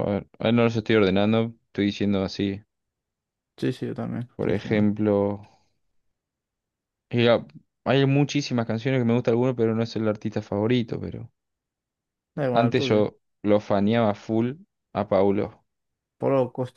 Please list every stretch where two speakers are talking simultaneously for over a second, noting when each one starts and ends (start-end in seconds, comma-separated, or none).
none